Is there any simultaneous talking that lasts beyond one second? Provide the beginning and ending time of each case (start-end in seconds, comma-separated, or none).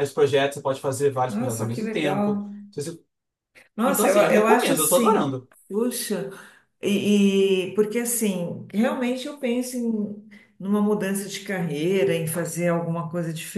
1.3-2.5, 3.8-5.5